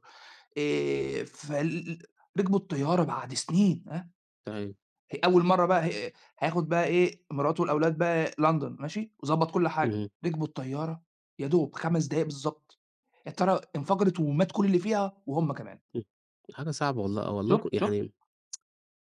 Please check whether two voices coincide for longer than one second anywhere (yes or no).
no